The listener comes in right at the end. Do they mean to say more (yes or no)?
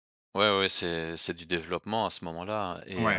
yes